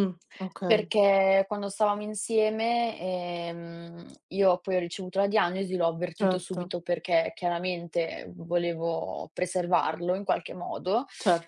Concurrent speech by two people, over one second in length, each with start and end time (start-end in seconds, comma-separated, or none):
none